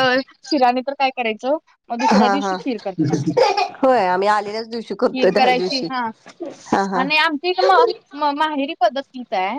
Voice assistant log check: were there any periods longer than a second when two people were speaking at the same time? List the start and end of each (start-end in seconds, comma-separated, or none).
none